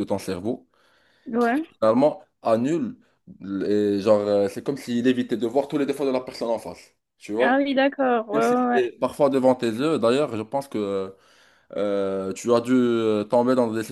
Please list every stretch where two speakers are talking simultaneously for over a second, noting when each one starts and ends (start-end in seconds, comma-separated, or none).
none